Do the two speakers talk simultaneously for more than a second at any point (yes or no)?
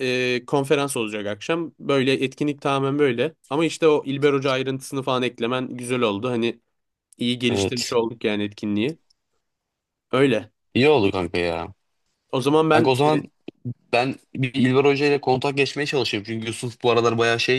no